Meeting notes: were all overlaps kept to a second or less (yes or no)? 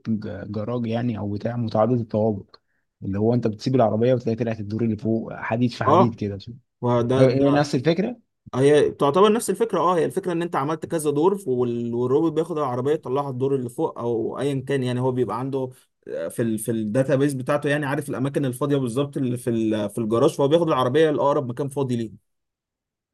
yes